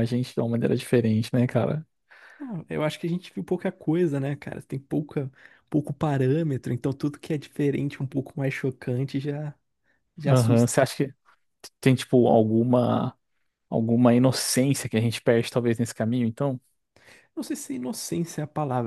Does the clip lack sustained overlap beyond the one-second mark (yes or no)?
yes